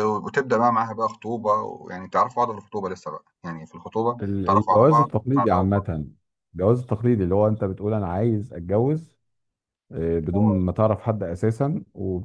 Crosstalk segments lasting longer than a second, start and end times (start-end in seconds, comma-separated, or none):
4.2-5.9